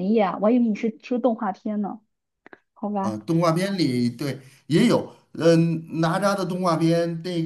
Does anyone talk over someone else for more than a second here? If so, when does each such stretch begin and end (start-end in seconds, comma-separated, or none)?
none